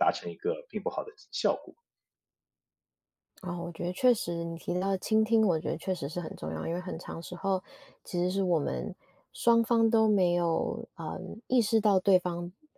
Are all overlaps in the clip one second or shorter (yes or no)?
yes